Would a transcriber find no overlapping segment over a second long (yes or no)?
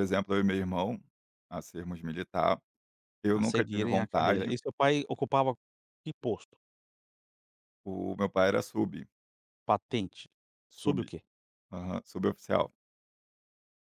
no